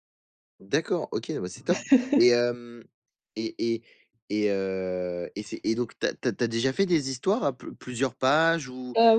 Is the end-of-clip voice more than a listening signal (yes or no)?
no